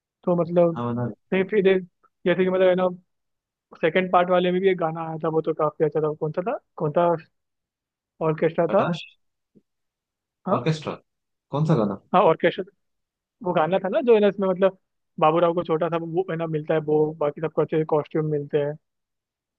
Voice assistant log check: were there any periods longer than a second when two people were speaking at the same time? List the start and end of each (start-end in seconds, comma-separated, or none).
none